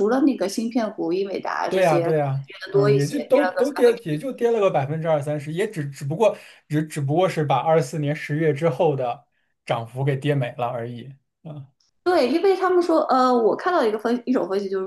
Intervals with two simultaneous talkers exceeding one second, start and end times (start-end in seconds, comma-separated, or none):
1.7-4.2